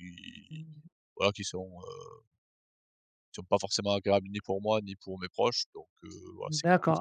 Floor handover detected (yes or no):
yes